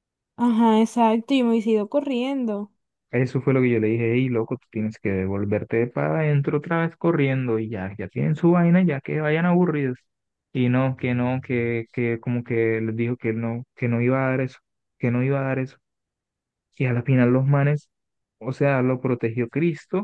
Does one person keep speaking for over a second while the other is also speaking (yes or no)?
no